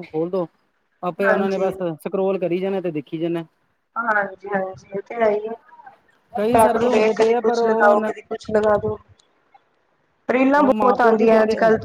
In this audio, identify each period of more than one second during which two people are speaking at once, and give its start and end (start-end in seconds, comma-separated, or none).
6.5-8.1